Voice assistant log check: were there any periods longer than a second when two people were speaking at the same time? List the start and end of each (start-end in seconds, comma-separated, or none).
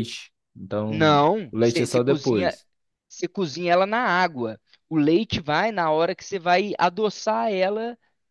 0.9-2.6